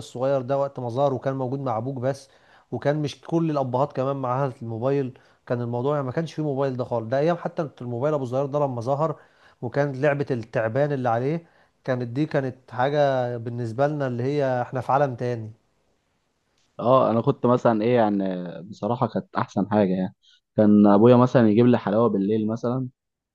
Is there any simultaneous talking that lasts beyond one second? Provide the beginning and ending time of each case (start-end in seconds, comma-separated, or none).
none